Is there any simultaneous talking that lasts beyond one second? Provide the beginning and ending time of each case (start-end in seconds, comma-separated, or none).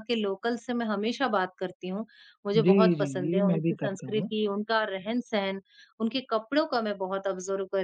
2.5-4.3